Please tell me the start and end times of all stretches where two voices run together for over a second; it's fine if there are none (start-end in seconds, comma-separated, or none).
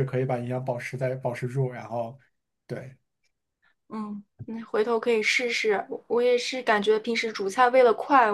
none